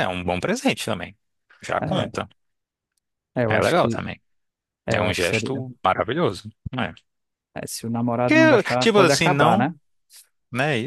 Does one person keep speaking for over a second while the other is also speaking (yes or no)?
yes